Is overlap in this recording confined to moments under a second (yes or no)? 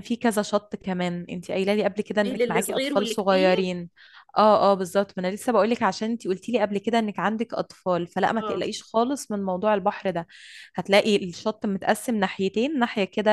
no